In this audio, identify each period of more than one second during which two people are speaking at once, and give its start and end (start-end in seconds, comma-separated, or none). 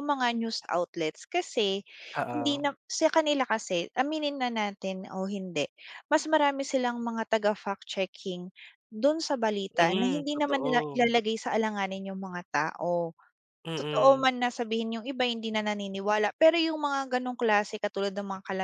9.7-11.2